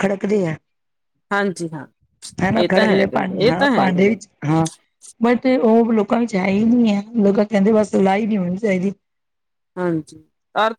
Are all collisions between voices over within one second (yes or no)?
no